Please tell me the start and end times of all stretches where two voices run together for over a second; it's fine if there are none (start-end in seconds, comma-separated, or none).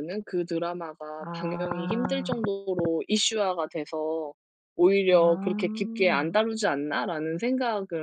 1.2-2.5, 5.1-6.4